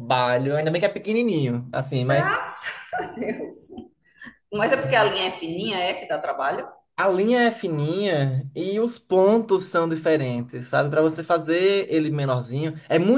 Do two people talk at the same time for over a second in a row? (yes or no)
no